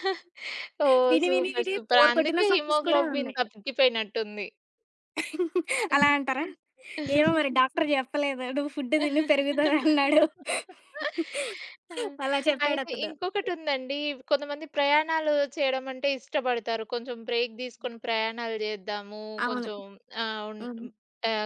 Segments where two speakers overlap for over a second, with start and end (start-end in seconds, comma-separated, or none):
1.1-3.4